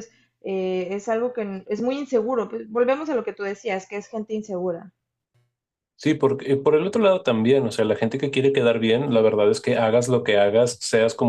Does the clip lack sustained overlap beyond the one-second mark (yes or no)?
yes